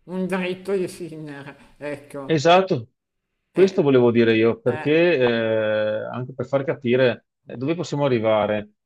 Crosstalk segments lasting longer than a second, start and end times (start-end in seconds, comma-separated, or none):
none